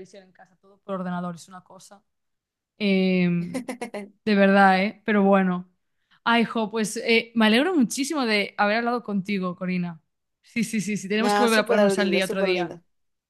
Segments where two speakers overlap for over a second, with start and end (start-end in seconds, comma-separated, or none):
11.2-12.8